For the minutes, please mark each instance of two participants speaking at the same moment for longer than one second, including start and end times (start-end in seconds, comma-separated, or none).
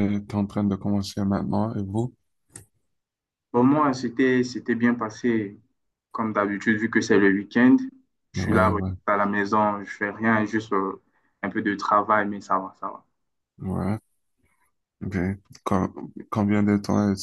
none